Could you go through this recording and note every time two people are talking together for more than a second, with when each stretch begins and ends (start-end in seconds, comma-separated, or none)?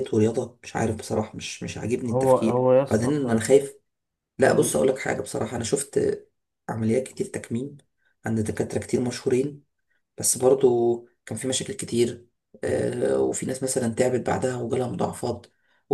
2.0-3.4